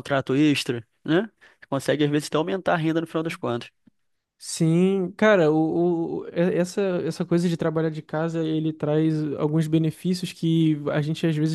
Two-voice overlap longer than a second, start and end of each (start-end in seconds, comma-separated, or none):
none